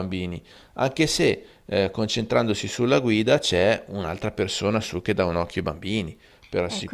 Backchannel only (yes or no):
no